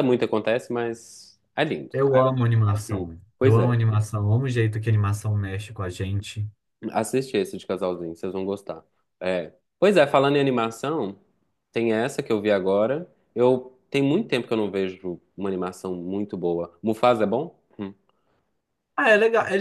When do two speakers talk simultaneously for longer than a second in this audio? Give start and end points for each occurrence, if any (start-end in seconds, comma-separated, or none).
1.9-3.7